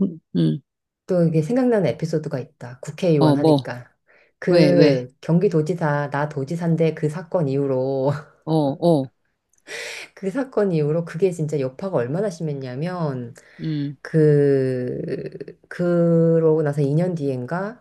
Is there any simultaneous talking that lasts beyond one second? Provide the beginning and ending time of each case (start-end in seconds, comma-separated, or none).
none